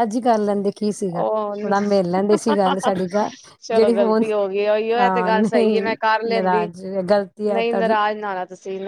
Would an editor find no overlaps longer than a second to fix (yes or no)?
yes